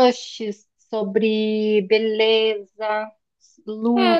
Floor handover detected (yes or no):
yes